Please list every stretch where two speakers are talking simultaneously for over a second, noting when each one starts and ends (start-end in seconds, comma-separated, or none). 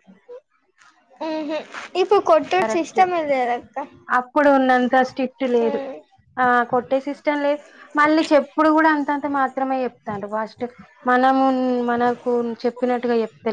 none